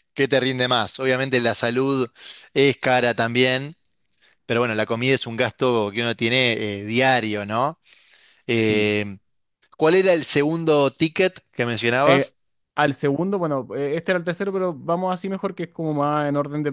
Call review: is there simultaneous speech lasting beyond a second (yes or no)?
no